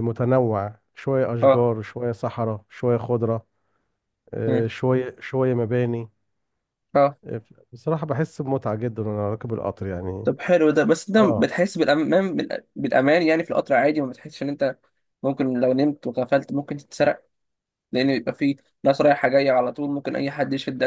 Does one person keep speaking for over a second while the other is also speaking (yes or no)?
no